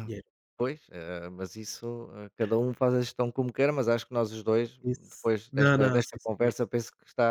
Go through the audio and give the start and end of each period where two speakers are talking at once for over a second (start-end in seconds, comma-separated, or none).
4.8-6.5